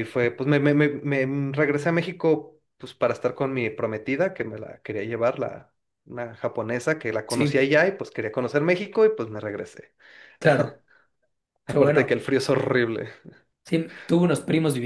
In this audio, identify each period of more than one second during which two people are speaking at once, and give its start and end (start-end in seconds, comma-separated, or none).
none